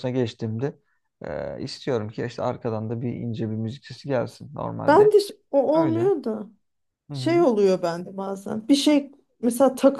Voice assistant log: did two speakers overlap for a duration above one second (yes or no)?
no